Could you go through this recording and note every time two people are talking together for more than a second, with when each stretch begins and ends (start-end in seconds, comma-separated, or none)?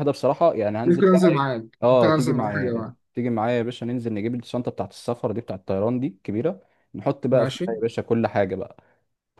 0.8-3.0